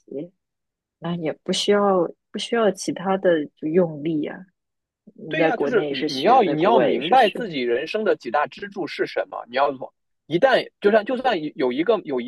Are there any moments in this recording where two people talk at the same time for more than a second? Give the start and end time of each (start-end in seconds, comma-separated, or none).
5.3-7.4